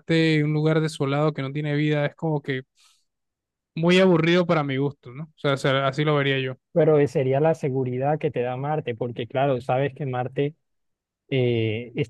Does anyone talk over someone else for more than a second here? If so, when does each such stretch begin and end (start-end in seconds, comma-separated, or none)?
none